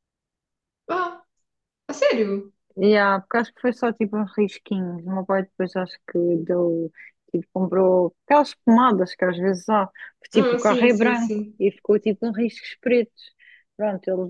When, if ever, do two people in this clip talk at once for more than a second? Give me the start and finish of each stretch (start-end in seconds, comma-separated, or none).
10.3-11.6